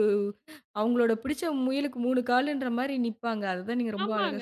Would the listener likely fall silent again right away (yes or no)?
no